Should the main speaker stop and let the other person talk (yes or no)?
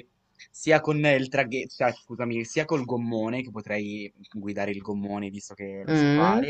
no